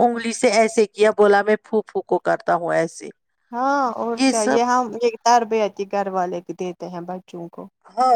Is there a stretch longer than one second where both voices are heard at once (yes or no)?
no